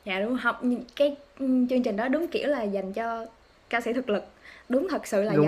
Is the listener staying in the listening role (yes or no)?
yes